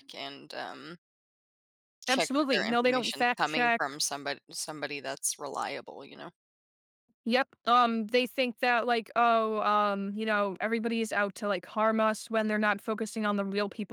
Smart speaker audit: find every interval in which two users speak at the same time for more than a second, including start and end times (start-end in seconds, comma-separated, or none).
2.1-4.0